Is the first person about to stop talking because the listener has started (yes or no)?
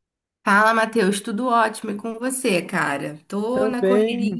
yes